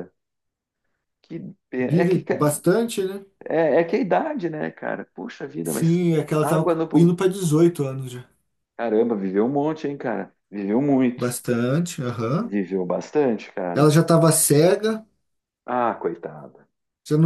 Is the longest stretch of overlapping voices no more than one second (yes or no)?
no